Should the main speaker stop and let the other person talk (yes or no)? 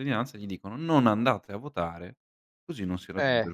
yes